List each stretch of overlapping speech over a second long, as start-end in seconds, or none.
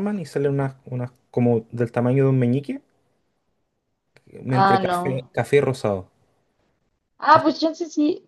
none